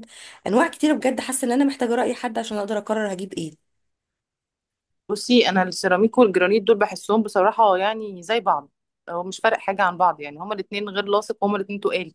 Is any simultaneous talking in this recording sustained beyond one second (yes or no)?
no